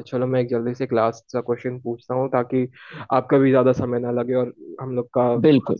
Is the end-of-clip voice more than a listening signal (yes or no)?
no